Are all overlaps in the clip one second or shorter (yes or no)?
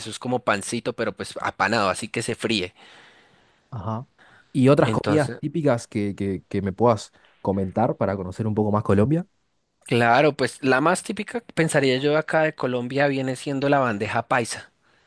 yes